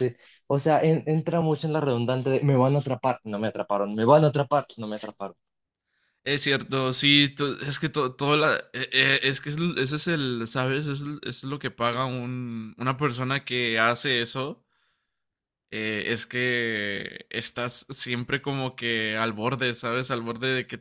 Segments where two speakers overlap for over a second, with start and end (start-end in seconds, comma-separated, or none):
none